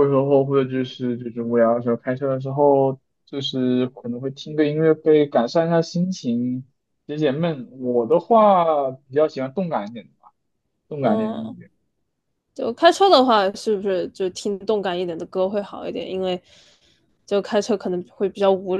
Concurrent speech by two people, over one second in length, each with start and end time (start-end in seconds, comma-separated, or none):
none